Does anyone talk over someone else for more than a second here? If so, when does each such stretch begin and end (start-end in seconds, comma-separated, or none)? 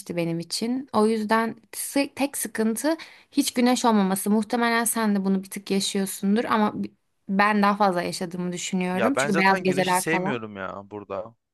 8.9-10.4